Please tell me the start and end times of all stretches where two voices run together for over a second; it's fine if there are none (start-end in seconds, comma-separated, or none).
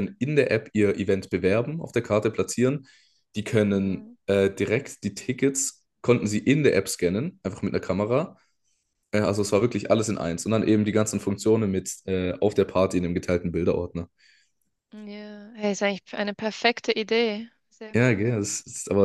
none